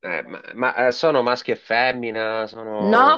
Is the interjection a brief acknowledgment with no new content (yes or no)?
no